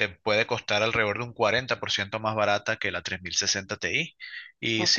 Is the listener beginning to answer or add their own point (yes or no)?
no